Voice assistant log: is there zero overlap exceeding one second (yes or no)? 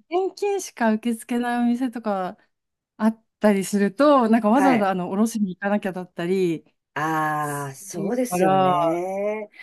no